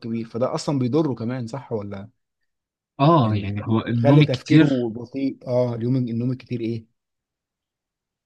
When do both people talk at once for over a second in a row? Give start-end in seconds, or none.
3.2-4.9